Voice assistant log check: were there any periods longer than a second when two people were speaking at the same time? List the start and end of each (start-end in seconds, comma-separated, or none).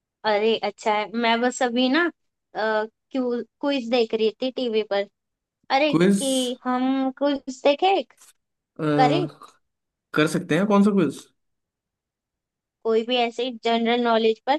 none